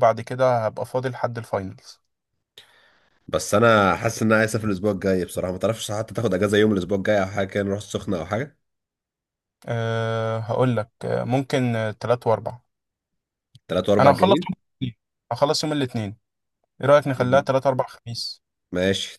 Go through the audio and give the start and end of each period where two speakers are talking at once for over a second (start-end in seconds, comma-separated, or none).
none